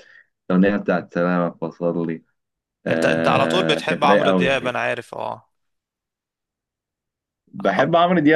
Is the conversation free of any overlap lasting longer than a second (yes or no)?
no